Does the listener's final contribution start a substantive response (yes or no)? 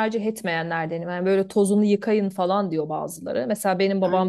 no